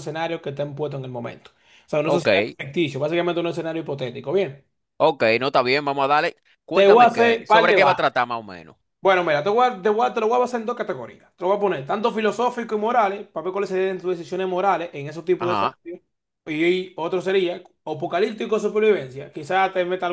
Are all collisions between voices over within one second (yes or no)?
no